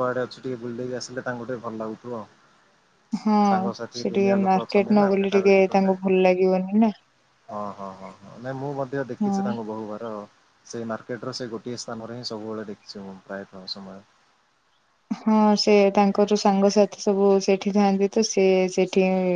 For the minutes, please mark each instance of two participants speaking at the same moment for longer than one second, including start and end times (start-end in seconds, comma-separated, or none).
4.0-6.0